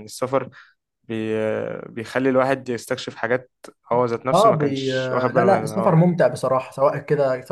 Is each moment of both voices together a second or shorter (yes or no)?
no